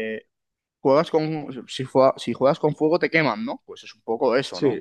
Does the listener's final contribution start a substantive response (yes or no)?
yes